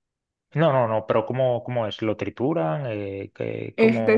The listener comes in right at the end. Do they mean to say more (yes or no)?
yes